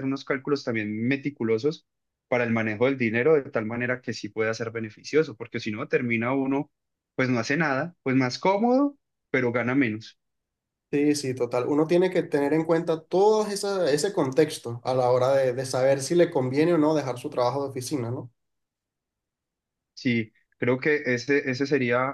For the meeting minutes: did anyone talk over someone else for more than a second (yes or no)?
no